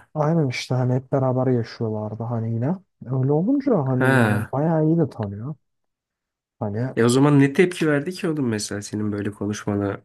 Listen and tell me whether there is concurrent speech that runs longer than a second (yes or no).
no